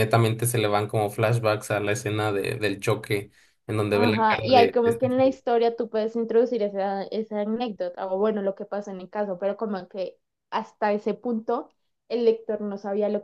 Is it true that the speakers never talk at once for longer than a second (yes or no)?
no